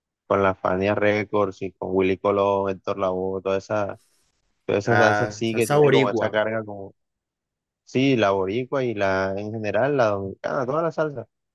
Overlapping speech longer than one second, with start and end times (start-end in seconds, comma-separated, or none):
4.8-6.4